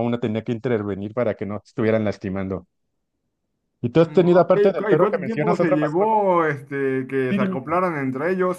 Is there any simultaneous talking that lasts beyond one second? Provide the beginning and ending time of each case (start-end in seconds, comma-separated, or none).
4.0-6.2